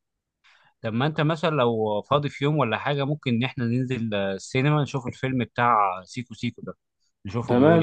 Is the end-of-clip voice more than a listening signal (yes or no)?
yes